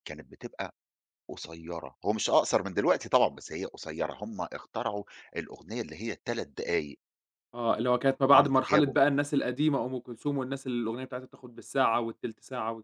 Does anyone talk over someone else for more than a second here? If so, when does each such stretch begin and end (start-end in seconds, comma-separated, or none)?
none